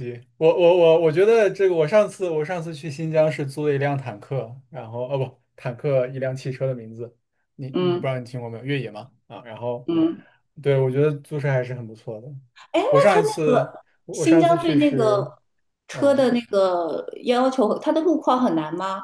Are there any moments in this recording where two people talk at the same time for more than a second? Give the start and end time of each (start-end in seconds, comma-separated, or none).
12.9-15.3